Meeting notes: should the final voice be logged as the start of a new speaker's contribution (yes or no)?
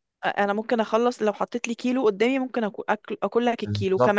no